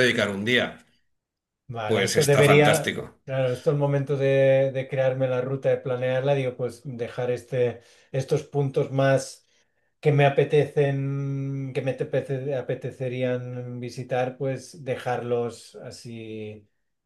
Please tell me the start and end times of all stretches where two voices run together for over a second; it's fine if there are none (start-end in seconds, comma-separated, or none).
1.9-3.2